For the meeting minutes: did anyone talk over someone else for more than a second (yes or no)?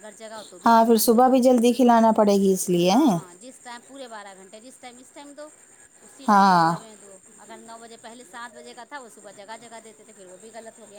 yes